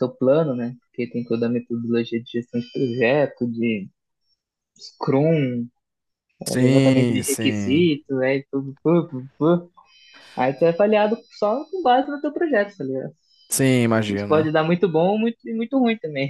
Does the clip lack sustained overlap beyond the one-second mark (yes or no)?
no